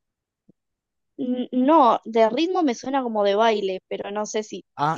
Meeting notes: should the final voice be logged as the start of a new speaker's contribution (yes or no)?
yes